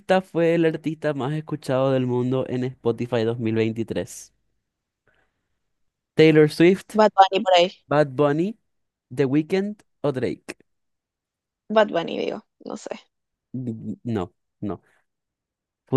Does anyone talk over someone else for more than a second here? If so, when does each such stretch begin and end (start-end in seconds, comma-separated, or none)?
none